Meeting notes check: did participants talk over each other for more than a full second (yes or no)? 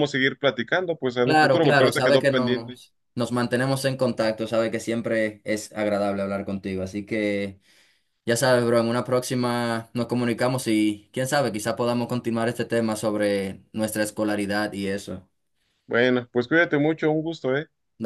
yes